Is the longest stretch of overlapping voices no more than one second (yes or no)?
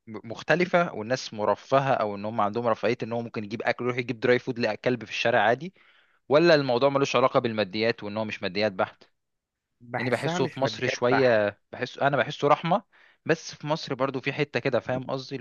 no